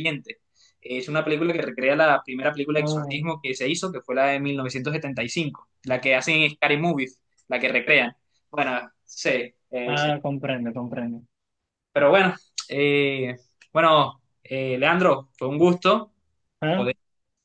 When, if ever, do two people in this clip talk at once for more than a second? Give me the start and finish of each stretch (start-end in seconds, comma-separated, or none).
none